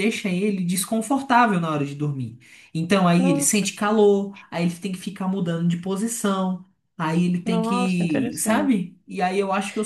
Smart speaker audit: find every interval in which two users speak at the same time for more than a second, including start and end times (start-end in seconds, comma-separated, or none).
7.4-8.8